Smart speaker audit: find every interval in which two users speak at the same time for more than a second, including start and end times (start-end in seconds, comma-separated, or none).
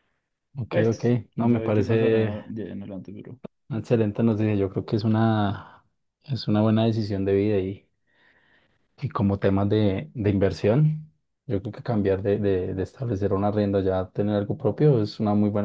0.7-2.3